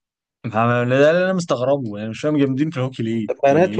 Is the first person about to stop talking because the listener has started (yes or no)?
yes